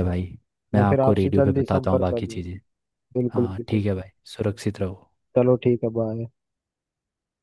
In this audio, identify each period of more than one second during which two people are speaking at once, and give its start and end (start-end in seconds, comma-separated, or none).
0.8-2.4